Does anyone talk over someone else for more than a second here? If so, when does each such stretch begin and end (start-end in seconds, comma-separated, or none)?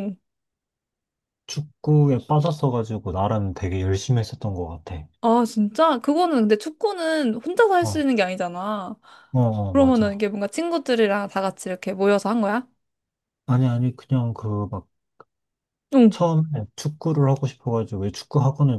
none